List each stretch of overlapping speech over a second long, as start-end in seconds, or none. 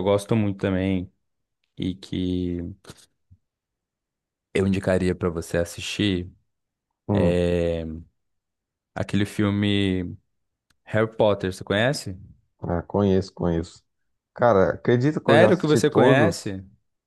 15.3-16.5